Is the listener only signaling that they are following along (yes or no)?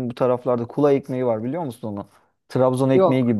yes